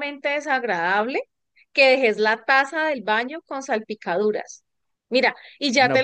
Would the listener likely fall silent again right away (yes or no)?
yes